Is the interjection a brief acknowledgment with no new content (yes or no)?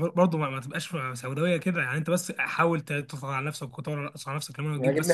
no